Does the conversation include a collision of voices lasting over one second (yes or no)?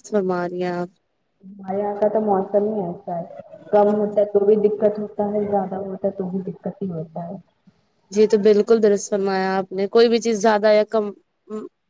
no